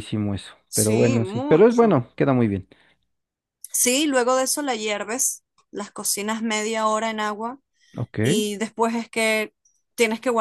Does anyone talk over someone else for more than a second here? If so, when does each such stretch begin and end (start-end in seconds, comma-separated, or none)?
0.7-2.0